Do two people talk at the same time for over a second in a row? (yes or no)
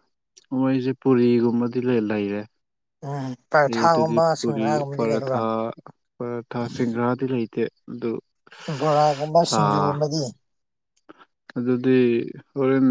yes